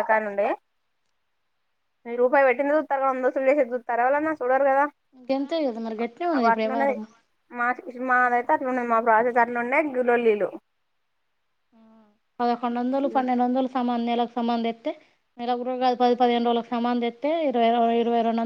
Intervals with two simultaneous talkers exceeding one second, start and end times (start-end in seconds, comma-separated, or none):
5.3-6.9